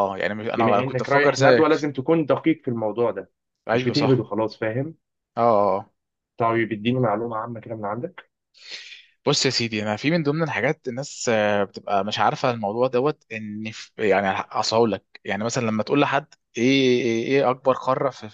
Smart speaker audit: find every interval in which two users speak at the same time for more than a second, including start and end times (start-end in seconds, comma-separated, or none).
0.5-1.7